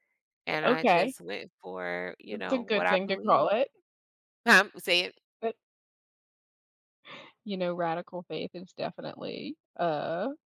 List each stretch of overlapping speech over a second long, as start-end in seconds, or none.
2.3-3.5